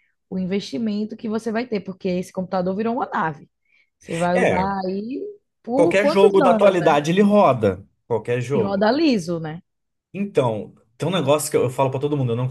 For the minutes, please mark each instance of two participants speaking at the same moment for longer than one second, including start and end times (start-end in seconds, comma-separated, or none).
5.7-7.0